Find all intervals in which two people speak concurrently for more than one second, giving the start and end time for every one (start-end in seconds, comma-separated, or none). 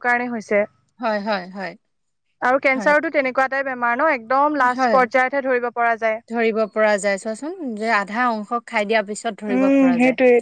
none